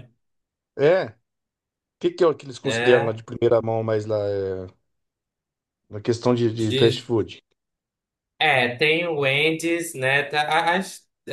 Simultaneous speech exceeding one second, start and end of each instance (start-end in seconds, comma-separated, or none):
none